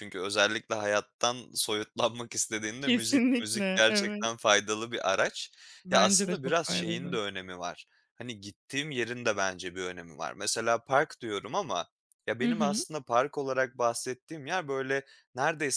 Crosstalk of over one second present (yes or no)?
yes